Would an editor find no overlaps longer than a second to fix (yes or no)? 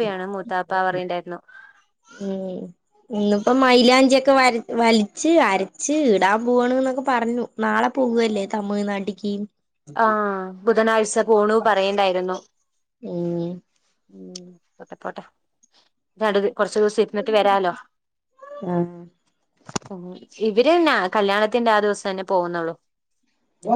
yes